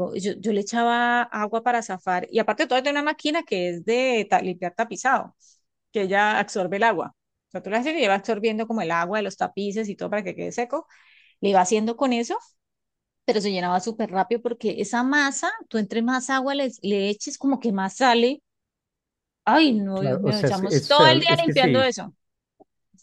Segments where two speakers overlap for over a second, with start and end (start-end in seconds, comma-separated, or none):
19.9-21.9